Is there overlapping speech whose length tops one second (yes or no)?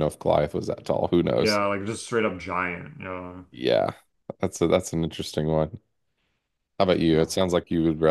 no